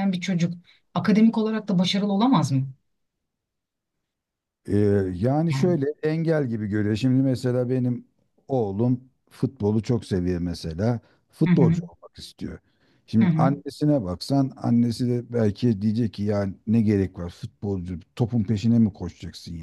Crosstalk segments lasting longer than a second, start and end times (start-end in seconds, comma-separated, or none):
none